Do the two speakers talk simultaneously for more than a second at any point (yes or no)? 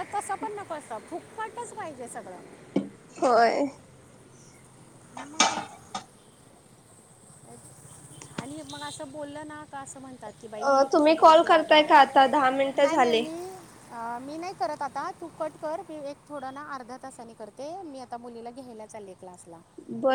yes